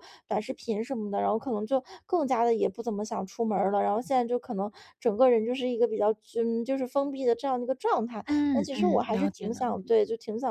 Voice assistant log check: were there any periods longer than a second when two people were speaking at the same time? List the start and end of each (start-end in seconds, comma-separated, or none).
8.2-10.0